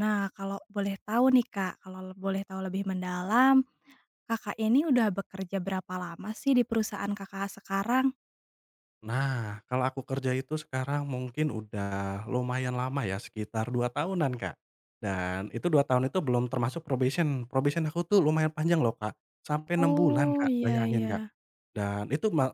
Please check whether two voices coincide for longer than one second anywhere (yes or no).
yes